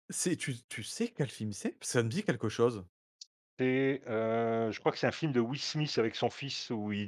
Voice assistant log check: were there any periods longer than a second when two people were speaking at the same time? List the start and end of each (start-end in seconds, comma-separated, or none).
none